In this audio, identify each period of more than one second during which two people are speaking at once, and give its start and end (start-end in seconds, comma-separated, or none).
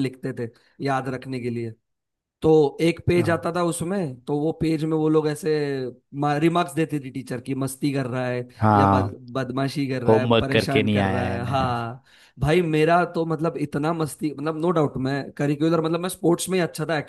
10.1-11.7